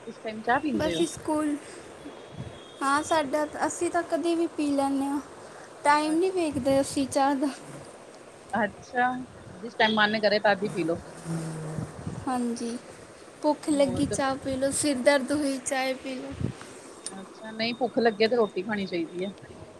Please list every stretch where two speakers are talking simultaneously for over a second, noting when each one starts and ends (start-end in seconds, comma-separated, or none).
none